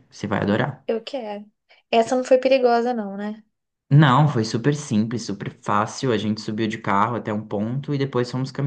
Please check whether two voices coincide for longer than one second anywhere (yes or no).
no